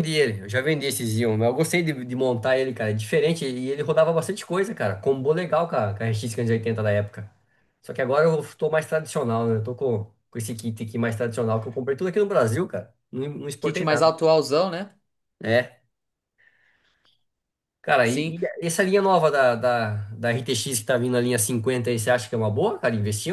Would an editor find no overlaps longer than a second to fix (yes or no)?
yes